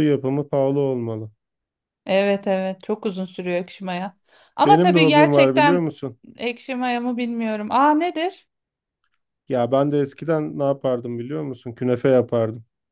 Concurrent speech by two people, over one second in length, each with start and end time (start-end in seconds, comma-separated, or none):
4.7-5.9